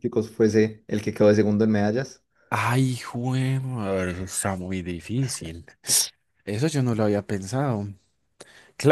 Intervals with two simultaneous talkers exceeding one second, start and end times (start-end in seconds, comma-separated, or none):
none